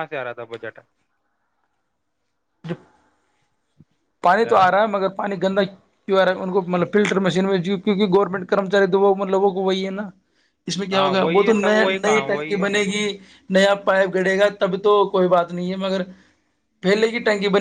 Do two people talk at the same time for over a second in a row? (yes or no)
yes